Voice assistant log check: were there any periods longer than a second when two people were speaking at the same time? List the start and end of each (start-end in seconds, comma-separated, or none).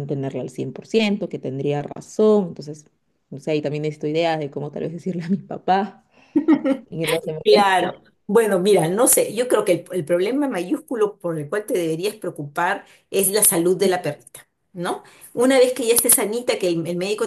none